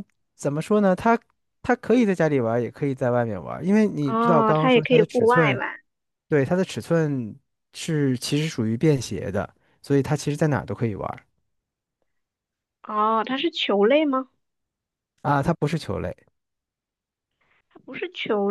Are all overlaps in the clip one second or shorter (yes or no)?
no